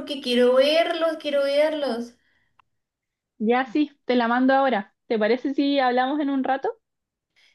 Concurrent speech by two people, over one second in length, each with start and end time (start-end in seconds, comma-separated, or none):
none